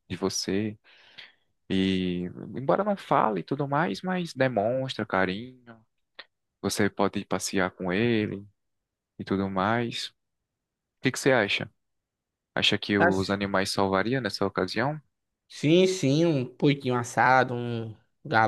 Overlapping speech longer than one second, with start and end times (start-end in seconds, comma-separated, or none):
none